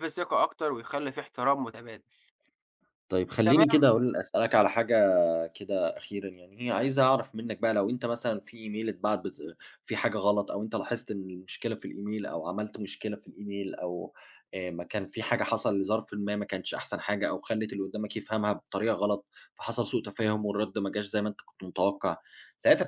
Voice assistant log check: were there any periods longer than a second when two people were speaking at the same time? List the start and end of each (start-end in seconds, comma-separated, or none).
none